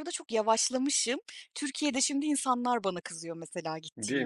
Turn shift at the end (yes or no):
yes